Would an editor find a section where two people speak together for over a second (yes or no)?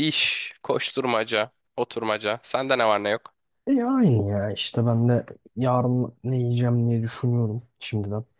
no